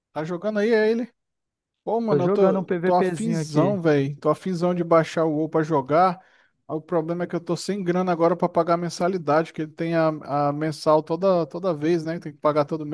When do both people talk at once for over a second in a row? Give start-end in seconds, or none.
2.1-3.7